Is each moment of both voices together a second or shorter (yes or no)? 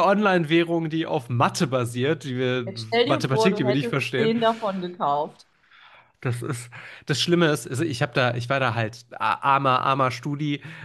no